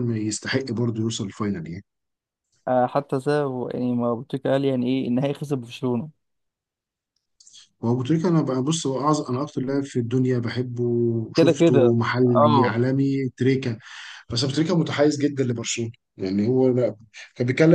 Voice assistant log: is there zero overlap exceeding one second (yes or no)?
no